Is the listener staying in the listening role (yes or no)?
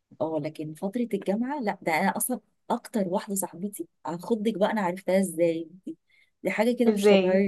yes